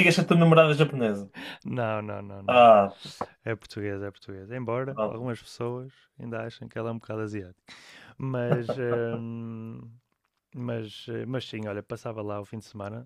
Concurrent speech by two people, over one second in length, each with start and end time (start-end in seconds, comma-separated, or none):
none